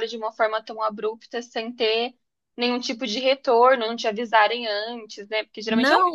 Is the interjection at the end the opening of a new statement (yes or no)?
yes